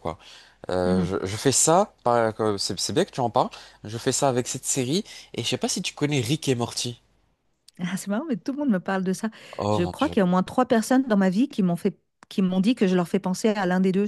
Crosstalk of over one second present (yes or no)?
no